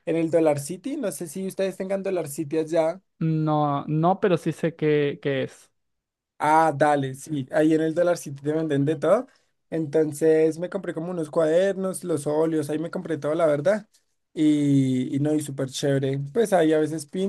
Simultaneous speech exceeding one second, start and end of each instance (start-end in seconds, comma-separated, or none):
none